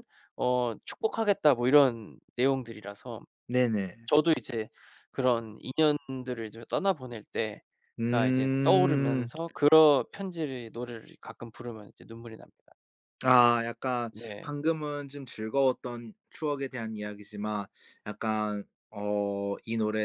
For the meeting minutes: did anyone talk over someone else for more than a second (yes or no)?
yes